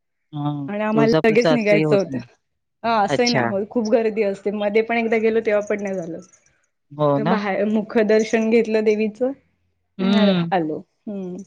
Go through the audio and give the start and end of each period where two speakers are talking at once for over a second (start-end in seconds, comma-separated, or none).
0.9-2.2